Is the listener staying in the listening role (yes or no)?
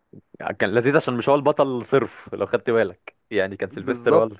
no